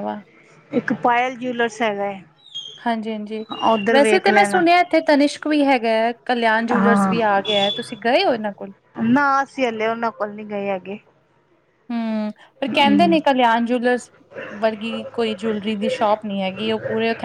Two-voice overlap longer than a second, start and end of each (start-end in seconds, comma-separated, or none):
none